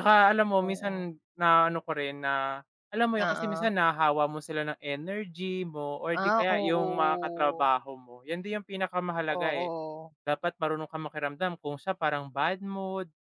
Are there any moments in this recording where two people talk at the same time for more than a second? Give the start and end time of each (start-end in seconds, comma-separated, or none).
6.1-7.7